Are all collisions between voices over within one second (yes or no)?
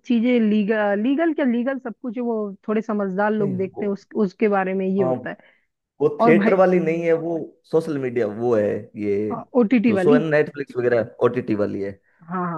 yes